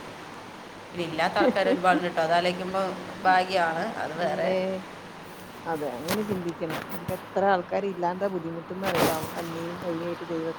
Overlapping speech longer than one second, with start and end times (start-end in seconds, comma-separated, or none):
none